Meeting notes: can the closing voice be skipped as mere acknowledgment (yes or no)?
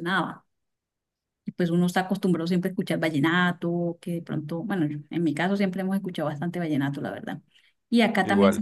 yes